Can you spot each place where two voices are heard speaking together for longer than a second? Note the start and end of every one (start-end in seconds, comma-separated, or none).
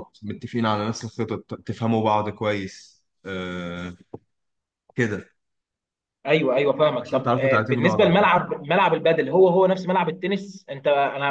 7.0-8.4